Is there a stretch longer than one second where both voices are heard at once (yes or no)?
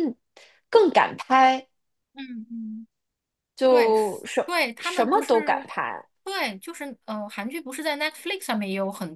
yes